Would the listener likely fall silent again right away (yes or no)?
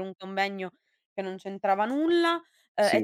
yes